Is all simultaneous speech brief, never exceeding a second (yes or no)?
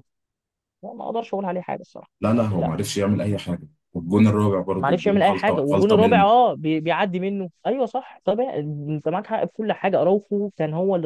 no